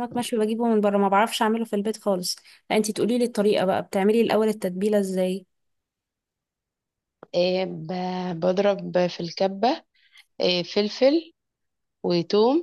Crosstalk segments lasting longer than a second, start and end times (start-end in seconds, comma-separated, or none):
none